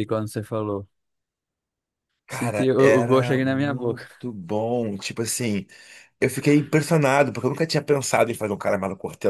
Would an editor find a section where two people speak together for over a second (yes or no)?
yes